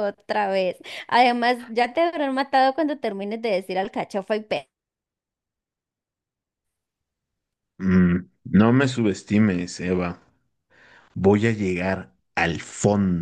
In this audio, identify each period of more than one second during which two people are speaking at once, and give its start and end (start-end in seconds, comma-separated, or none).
none